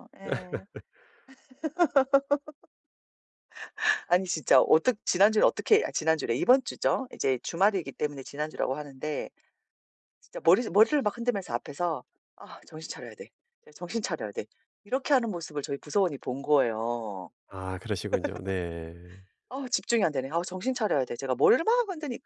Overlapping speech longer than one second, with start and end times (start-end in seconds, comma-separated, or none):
none